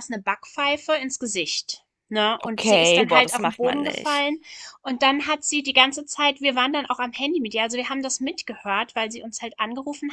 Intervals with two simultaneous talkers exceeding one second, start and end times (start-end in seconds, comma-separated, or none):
2.4-4.3